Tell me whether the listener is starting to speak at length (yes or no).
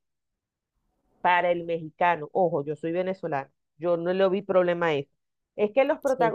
no